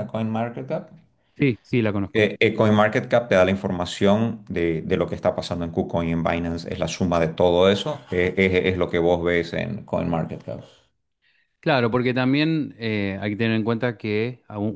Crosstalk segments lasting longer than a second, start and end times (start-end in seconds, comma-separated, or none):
none